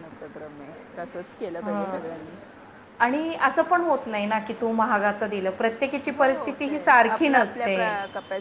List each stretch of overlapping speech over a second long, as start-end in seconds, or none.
6.1-7.7